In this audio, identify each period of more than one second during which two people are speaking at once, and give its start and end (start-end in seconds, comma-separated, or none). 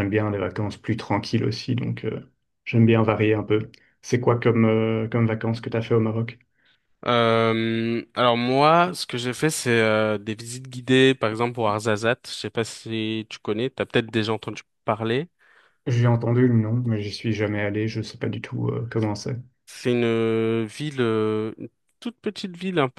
none